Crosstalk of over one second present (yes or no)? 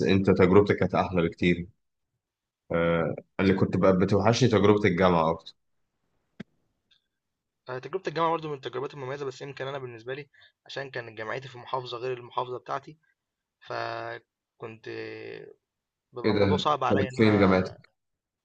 yes